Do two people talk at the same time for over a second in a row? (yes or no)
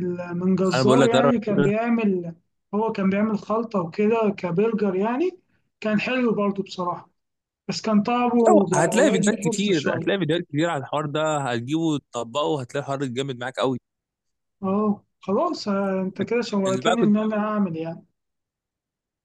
yes